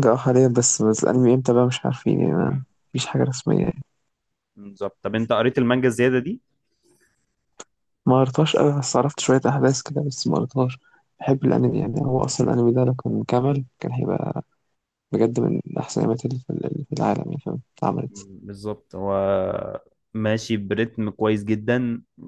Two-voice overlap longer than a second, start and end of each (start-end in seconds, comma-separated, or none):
none